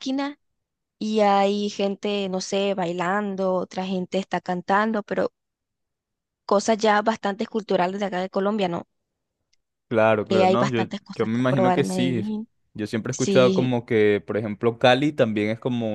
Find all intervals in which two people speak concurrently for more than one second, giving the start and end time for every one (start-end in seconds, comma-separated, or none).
10.3-12.2